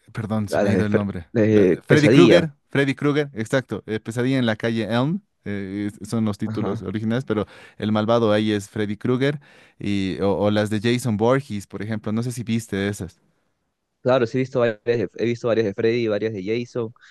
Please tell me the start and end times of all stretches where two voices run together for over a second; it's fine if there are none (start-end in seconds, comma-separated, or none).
0.5-2.5